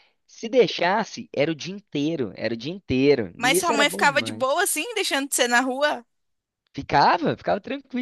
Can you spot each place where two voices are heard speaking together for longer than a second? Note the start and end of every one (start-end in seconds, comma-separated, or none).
3.4-4.6